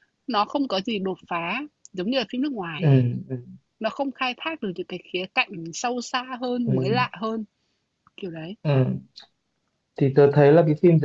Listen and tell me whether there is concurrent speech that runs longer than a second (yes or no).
no